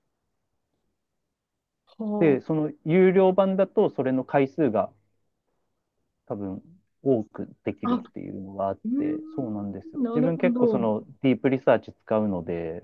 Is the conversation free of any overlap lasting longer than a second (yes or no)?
no